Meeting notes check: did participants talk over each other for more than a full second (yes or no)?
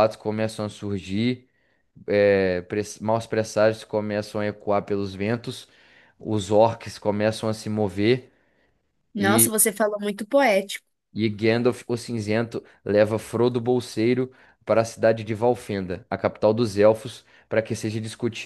no